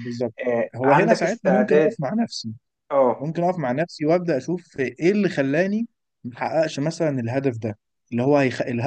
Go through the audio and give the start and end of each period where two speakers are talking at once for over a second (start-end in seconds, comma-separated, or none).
0.8-2.0